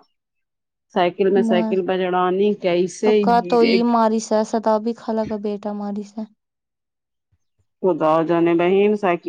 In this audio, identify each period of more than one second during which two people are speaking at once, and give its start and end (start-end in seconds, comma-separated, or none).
none